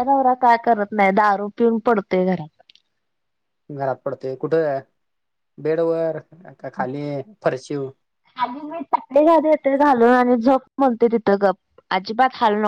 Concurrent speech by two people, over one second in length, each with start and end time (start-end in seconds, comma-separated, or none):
none